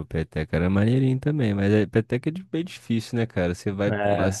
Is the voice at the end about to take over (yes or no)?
no